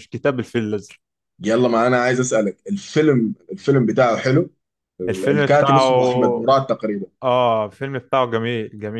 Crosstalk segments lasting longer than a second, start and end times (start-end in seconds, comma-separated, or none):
5.1-6.5